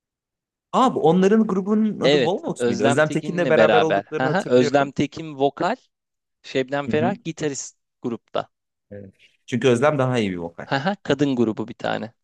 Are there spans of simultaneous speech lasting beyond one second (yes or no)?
yes